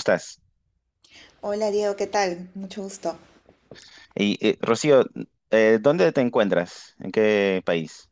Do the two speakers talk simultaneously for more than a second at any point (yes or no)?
no